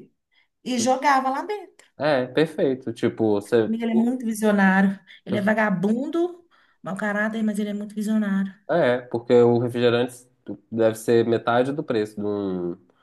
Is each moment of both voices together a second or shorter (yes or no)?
yes